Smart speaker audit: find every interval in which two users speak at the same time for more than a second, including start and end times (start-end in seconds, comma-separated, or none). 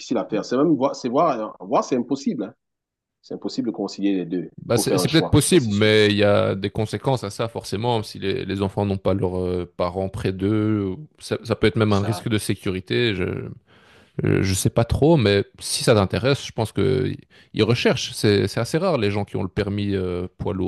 4.6-5.9